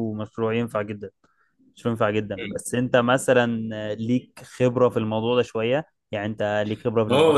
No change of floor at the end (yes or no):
no